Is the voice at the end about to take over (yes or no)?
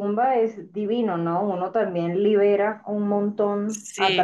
no